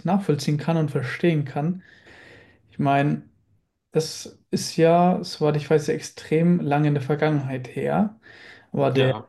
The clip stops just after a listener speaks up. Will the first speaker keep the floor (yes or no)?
yes